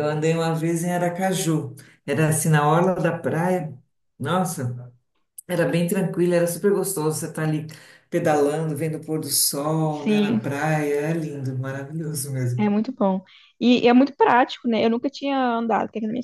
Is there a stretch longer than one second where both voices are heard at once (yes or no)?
no